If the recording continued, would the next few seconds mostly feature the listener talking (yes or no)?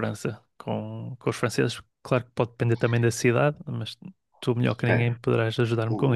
yes